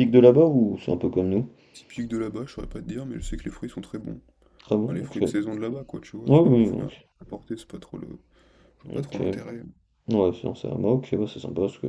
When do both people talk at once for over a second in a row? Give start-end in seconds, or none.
none